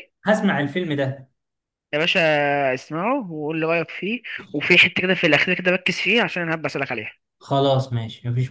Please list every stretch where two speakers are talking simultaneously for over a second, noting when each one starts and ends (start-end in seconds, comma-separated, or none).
none